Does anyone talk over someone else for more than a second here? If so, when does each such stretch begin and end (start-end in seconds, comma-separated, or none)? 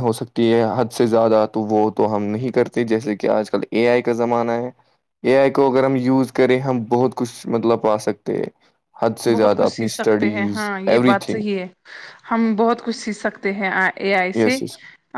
9.3-11.4